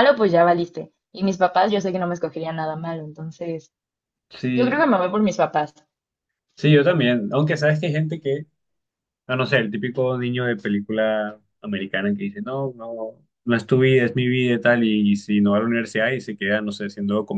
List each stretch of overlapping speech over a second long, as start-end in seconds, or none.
none